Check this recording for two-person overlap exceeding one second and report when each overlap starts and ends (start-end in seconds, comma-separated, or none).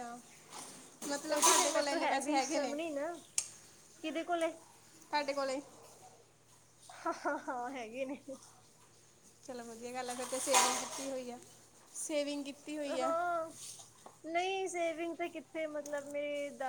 1.3-2.7